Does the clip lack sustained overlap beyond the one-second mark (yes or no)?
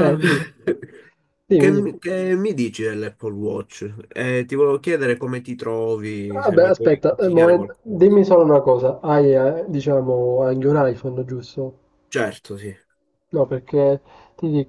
no